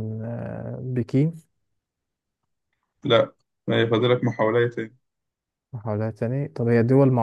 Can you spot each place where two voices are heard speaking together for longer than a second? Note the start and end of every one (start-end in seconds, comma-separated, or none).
none